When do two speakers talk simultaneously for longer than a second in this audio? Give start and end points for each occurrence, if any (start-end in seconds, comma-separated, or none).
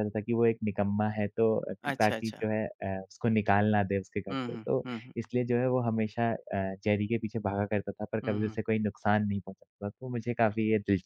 none